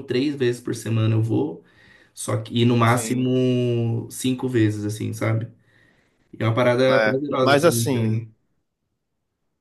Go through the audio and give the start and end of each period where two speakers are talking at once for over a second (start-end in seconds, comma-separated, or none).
6.9-8.2